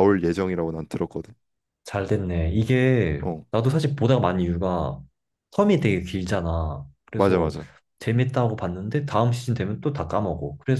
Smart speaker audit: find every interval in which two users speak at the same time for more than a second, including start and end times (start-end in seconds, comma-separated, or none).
none